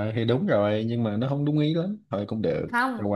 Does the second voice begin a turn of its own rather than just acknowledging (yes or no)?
yes